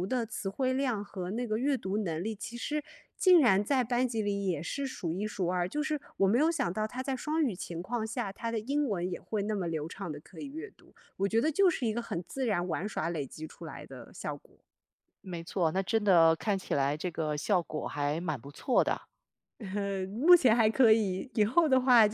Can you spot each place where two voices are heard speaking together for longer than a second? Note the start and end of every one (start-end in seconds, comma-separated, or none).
none